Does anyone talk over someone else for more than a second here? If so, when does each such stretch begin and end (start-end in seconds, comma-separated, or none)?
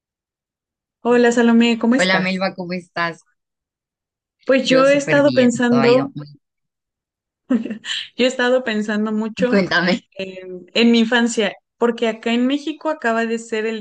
4.6-6.1